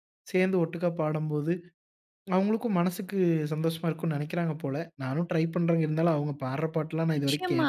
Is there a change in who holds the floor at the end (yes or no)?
yes